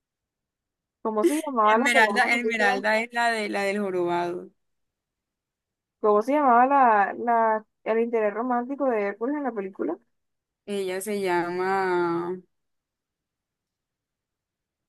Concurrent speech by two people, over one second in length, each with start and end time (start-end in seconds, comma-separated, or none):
1.6-2.8